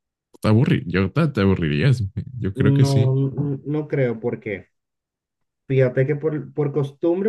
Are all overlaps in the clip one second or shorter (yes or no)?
yes